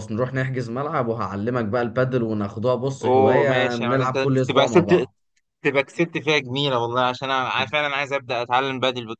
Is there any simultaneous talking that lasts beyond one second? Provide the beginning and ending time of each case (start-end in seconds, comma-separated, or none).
3.0-5.1